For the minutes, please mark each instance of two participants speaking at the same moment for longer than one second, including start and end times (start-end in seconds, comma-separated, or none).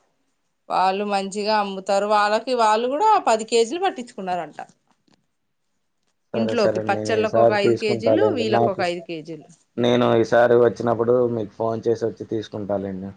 6.4-8.8